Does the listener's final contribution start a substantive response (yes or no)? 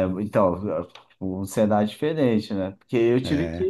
no